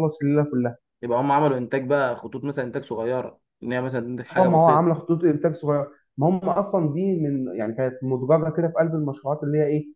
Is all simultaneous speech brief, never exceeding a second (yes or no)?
yes